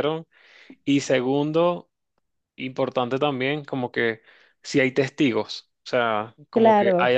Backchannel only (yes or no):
yes